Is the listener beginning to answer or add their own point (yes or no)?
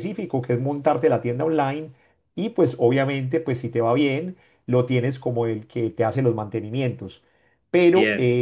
no